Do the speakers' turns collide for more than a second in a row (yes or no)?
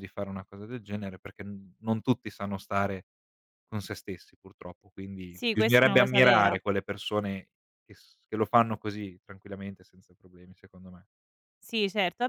yes